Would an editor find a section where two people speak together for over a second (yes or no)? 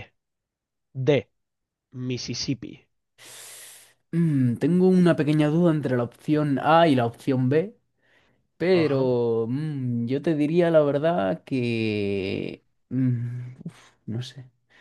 no